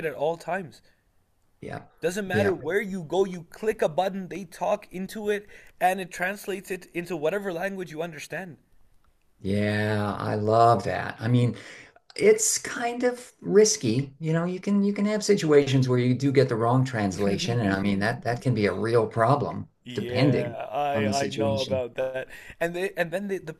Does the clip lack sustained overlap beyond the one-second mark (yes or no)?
no